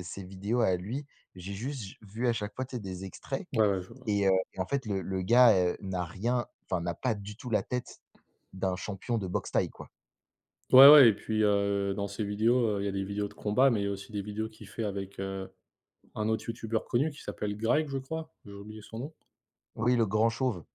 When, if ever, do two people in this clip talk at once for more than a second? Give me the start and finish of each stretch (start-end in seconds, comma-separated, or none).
none